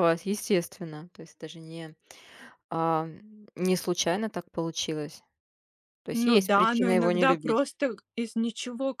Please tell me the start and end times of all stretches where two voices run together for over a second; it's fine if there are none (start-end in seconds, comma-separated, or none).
6.1-7.6